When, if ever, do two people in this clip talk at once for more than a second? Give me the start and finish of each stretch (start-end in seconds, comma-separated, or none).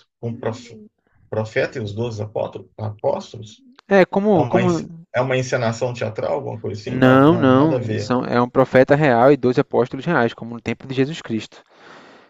6.8-8.1